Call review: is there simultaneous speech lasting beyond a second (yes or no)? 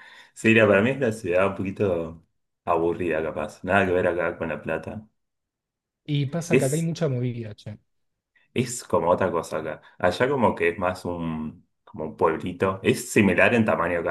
no